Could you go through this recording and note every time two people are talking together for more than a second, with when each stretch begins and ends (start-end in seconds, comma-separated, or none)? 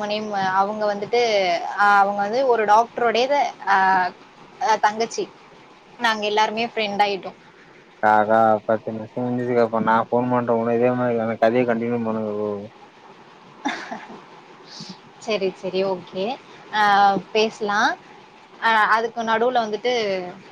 none